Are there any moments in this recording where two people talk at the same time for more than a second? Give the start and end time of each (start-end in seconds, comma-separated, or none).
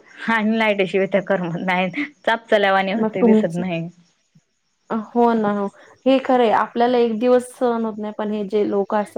none